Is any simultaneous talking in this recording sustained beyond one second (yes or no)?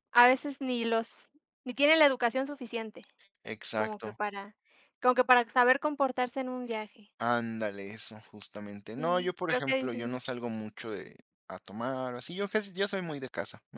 yes